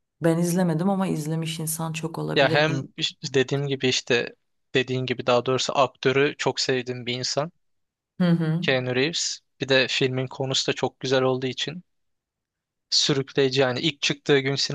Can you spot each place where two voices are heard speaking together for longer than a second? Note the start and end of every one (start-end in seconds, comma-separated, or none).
none